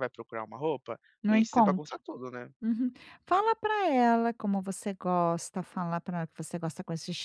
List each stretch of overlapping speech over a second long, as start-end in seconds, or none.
none